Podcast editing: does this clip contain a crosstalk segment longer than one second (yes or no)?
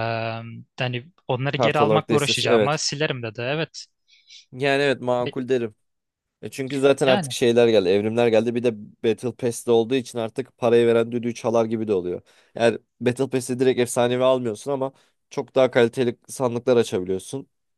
yes